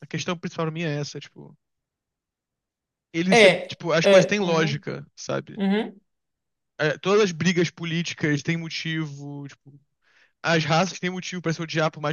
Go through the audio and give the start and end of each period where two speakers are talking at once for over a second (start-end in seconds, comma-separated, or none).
3.3-4.8